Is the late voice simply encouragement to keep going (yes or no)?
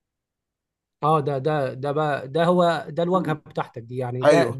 yes